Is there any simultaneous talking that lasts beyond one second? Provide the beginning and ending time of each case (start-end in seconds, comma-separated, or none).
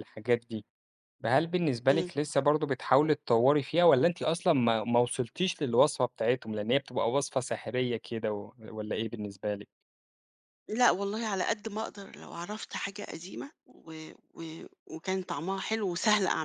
none